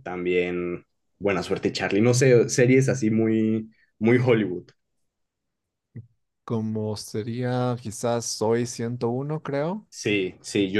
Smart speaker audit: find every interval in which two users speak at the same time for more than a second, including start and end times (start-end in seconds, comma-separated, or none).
none